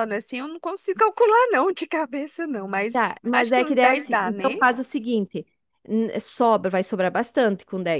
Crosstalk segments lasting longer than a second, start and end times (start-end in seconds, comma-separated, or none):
2.9-4.6